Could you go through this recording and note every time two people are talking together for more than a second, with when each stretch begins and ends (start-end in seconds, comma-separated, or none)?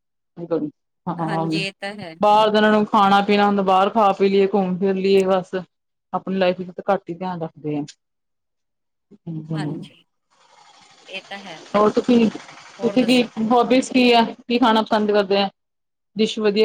none